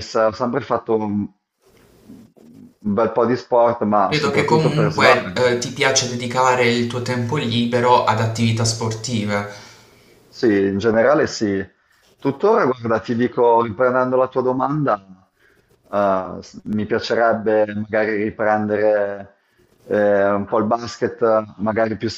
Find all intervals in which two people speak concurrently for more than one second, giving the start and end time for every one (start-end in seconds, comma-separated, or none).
4.1-5.8